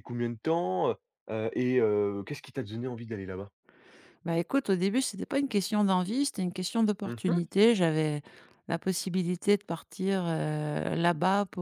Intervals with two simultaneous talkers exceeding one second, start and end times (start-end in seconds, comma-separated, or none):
none